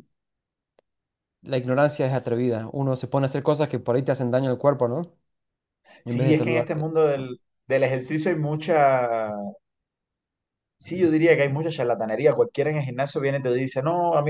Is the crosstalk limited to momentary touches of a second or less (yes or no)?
no